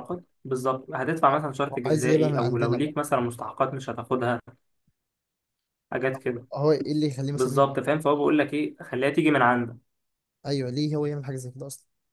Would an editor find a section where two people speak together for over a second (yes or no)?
yes